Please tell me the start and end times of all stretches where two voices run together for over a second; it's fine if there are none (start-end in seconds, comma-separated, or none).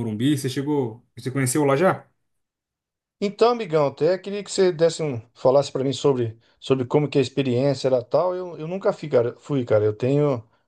none